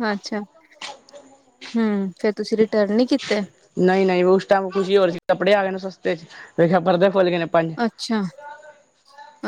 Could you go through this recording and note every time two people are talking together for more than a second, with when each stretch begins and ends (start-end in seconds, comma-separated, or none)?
none